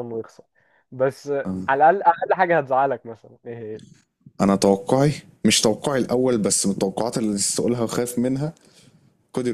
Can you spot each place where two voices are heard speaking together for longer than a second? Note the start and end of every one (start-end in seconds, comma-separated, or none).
none